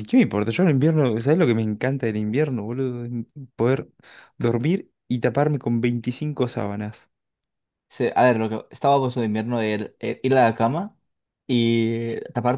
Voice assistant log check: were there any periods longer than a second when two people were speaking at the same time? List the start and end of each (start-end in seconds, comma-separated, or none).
none